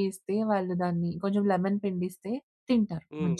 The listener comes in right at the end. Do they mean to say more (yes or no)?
yes